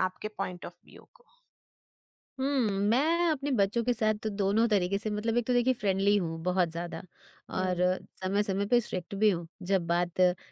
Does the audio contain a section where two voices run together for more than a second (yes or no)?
no